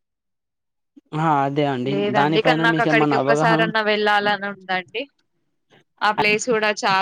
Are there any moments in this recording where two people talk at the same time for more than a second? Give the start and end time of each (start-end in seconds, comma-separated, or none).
1.9-3.6